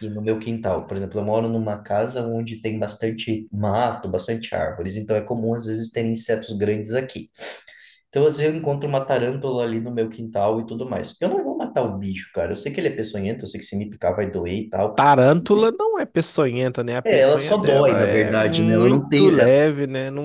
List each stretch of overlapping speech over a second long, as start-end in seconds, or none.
17.0-19.5